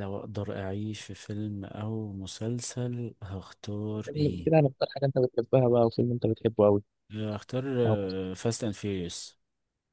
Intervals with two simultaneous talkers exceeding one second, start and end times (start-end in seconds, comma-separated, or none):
none